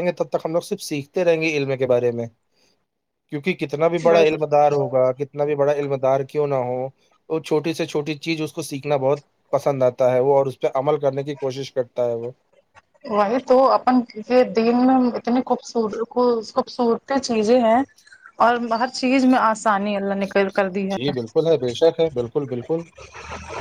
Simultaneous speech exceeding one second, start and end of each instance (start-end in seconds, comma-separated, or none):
none